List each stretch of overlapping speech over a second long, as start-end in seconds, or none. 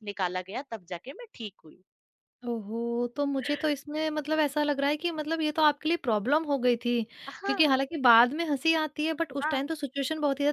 none